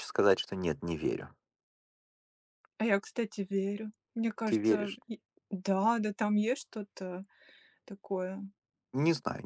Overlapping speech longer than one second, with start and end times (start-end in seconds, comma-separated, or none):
none